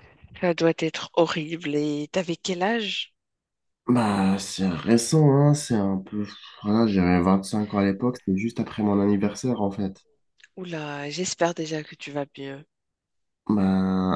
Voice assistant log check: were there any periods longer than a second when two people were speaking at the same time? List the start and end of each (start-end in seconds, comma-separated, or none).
none